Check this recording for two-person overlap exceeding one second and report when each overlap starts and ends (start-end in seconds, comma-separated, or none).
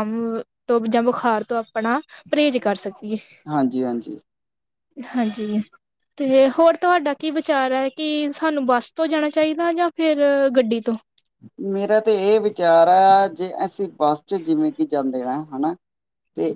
none